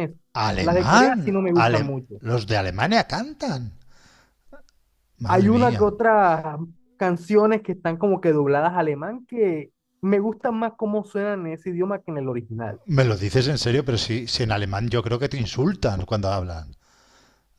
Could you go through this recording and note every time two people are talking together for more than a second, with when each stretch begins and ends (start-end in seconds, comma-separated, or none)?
0.6-2.2